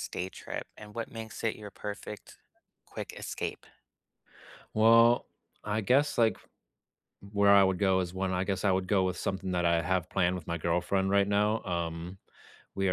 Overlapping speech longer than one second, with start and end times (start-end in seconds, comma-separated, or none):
none